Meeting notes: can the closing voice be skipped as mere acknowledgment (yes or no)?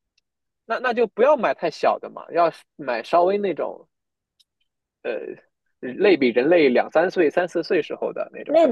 no